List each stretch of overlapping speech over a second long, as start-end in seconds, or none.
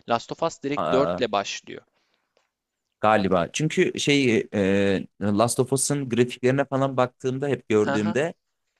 none